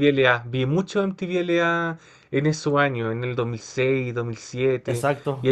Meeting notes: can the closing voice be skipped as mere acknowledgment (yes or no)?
yes